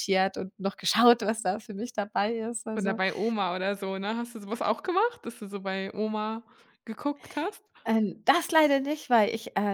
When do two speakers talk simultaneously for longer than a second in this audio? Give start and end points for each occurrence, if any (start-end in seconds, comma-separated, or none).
none